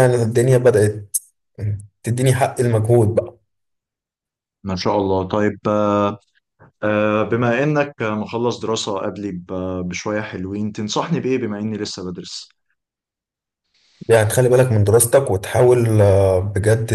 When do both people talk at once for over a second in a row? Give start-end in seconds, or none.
none